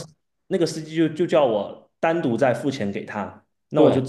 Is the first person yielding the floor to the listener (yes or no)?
no